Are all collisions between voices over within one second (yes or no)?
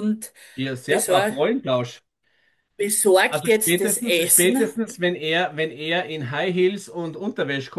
no